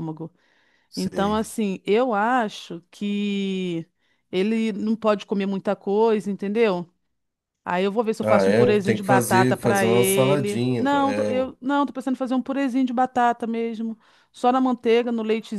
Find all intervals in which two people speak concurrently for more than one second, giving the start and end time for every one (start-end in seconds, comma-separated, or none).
8.2-11.3